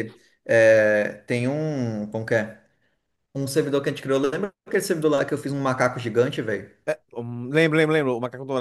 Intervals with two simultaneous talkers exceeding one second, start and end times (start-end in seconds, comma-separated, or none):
none